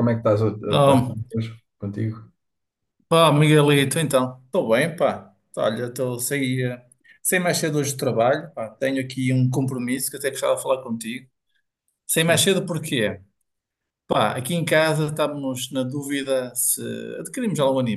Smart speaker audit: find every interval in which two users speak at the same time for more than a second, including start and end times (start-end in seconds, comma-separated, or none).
none